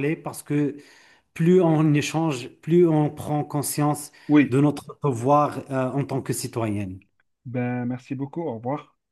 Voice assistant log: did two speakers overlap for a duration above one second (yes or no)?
no